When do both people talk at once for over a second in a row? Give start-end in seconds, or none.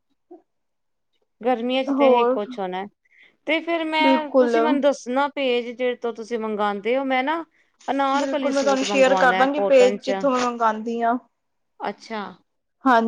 8.2-10.2